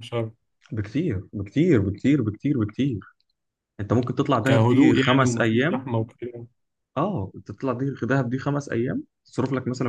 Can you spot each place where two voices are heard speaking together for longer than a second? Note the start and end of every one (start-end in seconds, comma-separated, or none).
4.4-5.8